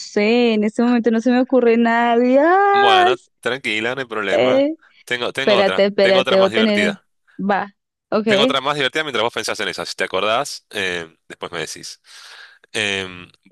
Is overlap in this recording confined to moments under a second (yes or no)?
no